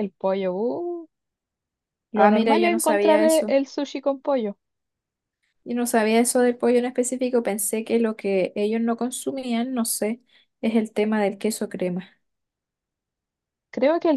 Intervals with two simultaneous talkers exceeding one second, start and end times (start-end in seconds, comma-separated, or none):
2.1-3.5